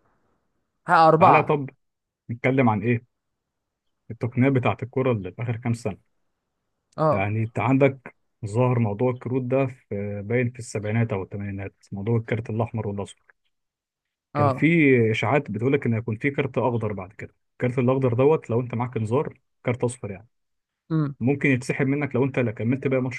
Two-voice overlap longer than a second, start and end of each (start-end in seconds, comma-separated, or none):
none